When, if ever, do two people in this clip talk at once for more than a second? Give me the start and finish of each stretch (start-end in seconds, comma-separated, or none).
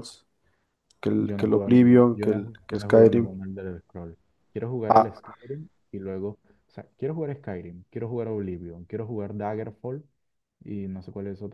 1.2-3.3